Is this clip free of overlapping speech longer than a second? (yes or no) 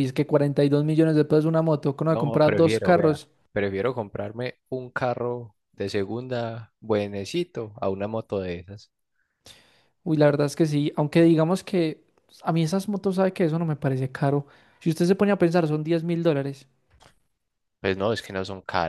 no